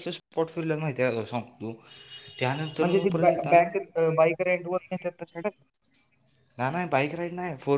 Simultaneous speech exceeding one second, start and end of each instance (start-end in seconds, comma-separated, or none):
none